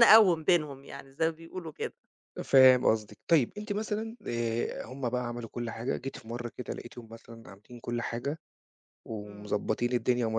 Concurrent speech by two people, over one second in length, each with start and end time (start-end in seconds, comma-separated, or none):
none